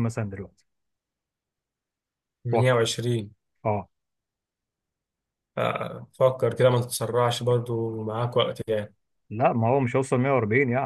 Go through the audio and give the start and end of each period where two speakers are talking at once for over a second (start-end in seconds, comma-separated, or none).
none